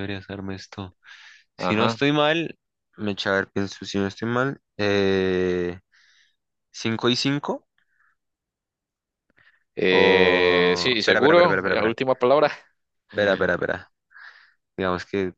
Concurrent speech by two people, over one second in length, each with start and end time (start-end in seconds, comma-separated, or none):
9.9-12.0